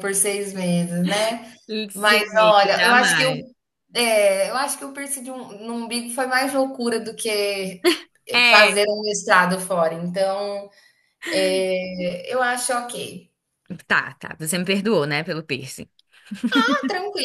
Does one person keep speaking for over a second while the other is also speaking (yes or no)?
yes